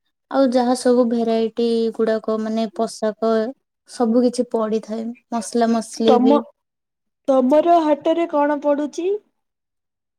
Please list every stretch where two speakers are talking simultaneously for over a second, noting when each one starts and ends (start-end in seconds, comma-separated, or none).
none